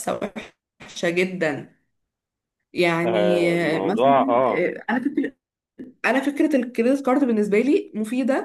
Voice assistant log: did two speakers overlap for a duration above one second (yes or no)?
yes